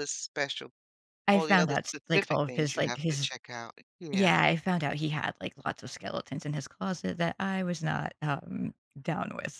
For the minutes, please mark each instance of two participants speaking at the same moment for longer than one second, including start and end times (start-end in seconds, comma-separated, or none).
1.3-3.3